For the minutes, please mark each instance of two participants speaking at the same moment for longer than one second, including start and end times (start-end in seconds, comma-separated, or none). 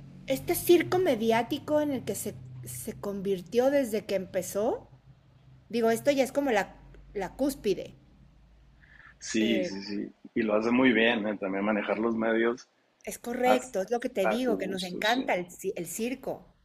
13.4-15.3